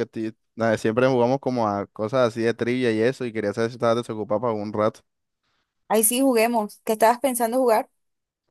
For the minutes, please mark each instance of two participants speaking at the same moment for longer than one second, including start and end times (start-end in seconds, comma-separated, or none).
none